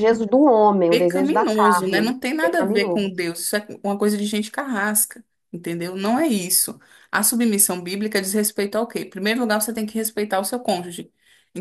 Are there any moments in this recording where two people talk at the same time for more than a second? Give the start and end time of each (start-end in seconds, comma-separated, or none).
0.9-3.1